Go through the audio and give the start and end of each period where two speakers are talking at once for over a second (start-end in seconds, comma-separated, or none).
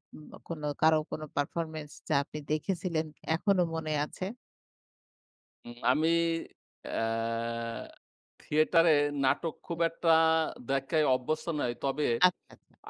none